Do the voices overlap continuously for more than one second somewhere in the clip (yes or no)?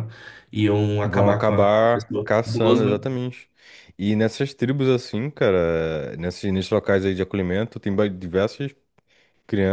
yes